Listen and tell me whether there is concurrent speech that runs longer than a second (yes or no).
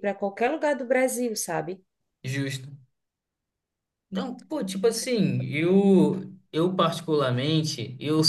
no